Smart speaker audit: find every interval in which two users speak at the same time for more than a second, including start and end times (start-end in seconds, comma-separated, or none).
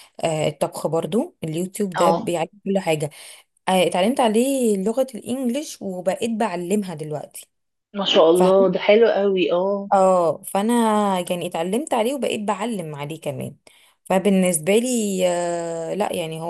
none